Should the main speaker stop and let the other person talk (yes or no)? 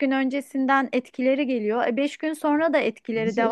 no